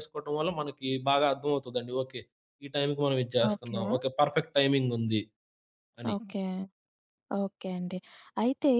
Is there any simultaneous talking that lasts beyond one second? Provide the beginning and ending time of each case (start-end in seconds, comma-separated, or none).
none